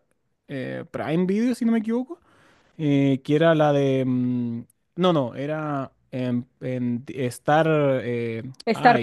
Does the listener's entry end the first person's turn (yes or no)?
no